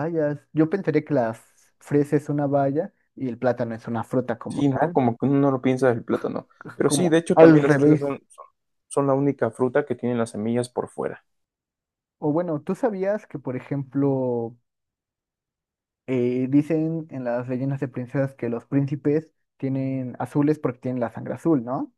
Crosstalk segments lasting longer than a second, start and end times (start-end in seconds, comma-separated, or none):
6.6-8.2